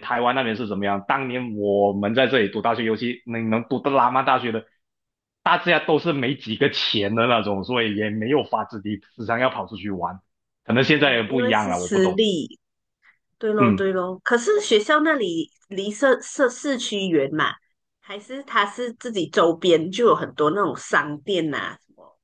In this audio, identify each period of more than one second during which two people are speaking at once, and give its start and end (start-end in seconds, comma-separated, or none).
10.9-12.2